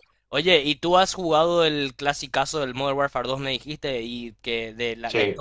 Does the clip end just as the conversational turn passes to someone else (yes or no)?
no